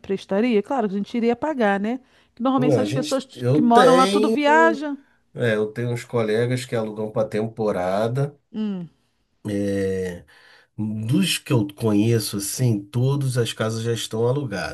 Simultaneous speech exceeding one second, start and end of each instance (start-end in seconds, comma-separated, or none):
2.6-4.4